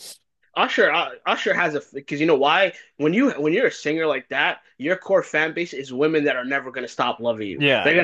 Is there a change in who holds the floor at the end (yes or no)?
no